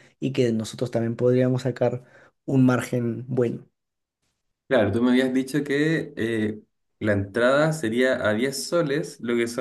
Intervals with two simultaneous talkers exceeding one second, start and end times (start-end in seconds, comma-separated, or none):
none